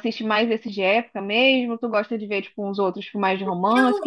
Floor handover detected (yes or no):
yes